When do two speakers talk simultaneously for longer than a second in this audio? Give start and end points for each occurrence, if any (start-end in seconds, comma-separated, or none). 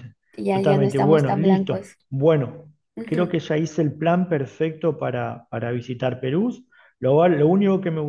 0.5-2.0